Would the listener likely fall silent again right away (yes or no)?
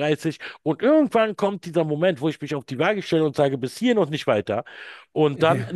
yes